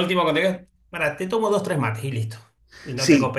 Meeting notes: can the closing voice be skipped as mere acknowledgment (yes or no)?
no